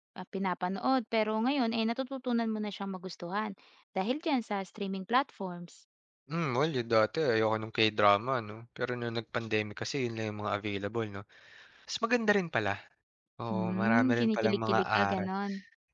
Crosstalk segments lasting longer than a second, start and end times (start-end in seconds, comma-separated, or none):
13.5-15.3